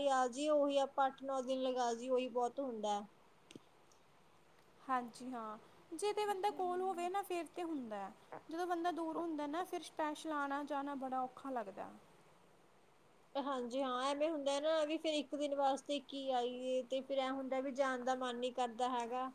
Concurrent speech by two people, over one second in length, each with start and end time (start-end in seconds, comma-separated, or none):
none